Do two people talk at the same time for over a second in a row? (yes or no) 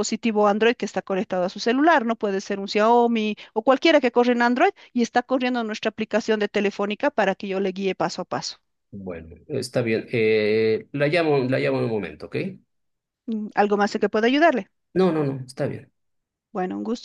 no